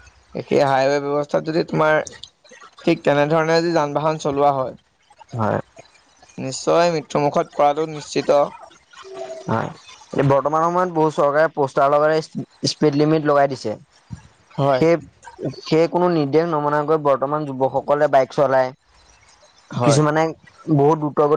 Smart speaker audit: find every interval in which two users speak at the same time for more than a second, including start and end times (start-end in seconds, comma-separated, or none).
none